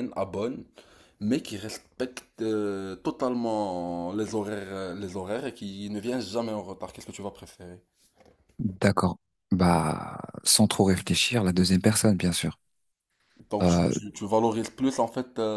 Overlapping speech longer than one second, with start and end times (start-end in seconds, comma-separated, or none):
none